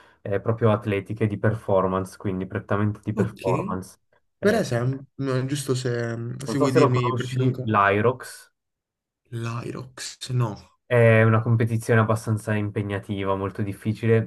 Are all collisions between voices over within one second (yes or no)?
no